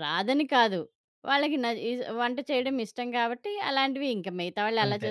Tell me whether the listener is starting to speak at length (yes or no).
no